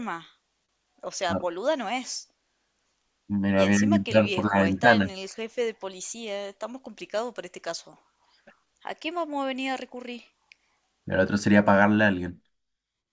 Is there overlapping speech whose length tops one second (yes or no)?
yes